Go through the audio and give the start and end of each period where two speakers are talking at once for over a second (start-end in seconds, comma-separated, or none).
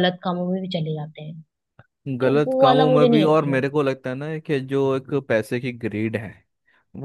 2.2-3.7